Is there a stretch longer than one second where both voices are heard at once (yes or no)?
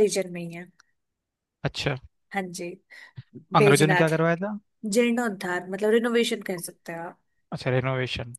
no